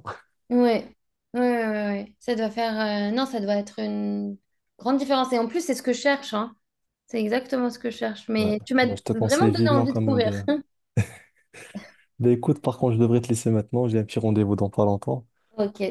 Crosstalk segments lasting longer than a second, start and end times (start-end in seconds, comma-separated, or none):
8.4-10.3